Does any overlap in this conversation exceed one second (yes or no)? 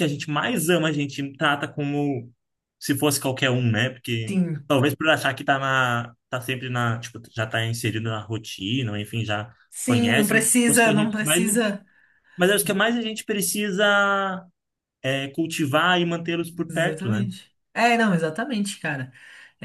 yes